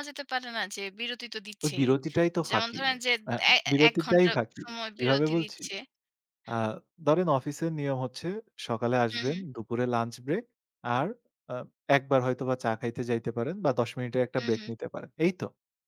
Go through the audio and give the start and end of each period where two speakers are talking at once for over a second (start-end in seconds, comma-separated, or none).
3.7-5.6